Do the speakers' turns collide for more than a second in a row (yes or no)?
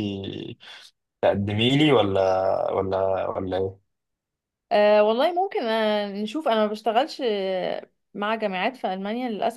no